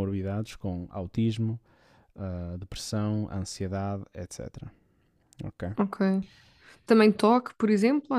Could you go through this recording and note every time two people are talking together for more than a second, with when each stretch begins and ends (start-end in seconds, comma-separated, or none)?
none